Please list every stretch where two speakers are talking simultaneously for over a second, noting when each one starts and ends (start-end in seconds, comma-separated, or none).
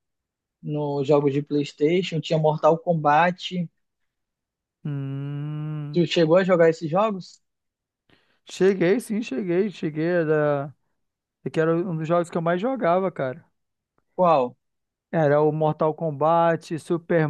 none